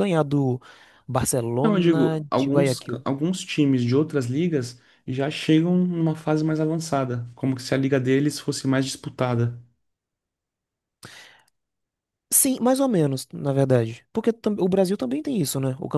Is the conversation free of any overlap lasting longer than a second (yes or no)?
no